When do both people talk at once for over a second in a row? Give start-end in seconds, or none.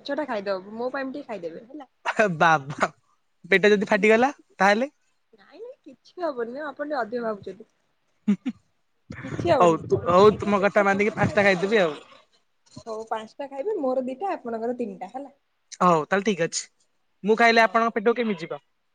9.6-11.8